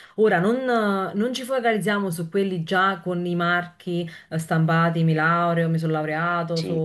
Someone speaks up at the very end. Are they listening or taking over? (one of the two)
listening